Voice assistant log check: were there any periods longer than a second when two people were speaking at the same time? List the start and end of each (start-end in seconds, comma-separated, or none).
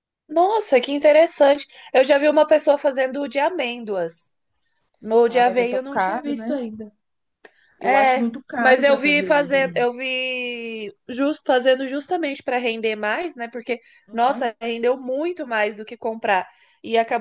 5.3-6.6, 7.8-9.9